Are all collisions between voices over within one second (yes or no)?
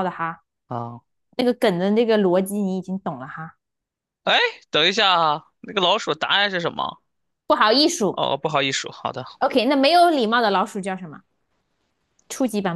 yes